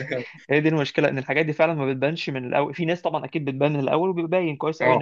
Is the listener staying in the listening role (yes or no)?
yes